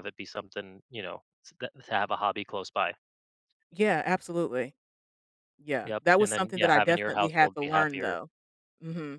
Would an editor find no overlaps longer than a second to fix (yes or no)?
no